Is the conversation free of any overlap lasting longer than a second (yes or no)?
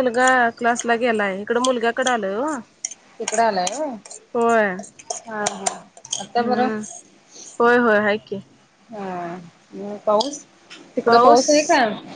yes